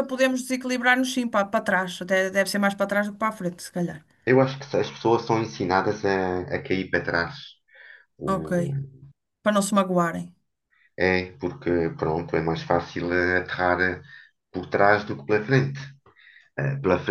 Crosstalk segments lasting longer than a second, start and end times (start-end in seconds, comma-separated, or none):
none